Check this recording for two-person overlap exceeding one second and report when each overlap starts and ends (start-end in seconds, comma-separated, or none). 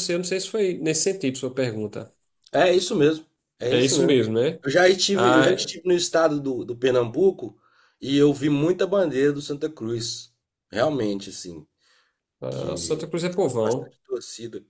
12.5-13.9